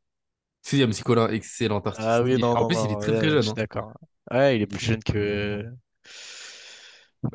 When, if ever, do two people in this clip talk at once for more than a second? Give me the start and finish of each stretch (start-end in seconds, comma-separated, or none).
1.9-3.6